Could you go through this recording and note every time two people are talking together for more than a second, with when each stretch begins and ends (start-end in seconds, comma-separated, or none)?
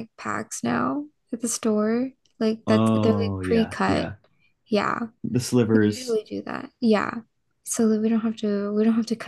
2.7-4.1